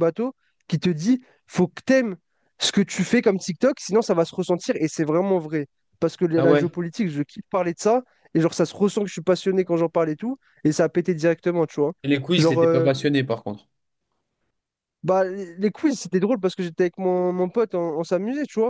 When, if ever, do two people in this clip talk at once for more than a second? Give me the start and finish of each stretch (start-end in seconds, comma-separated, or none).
none